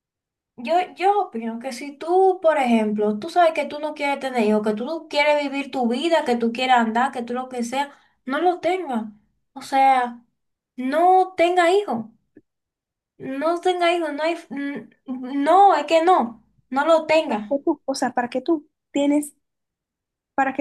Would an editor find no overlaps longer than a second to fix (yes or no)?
yes